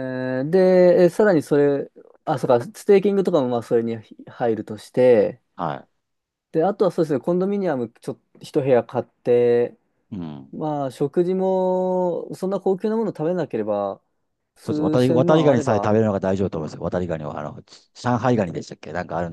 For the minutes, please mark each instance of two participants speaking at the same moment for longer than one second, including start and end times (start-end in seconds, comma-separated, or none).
14.6-16.0